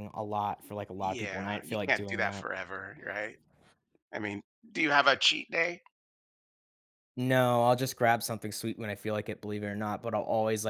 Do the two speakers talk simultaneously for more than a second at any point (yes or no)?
yes